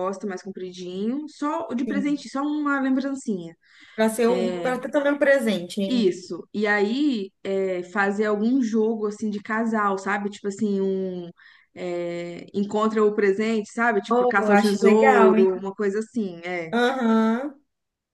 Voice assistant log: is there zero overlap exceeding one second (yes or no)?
no